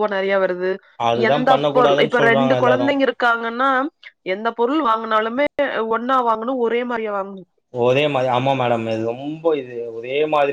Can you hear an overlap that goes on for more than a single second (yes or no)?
yes